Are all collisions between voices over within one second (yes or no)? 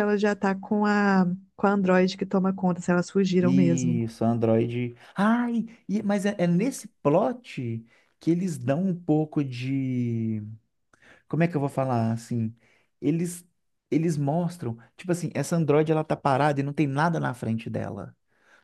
yes